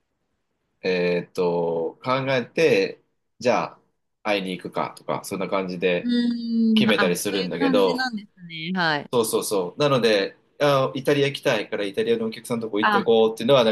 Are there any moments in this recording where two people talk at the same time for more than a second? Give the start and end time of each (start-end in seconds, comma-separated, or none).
6.8-8.1